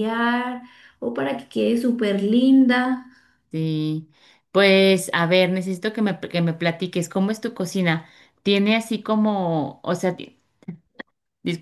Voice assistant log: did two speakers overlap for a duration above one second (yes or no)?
no